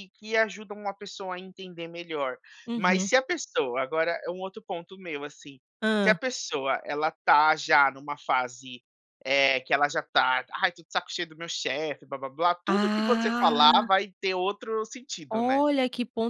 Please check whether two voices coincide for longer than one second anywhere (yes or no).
yes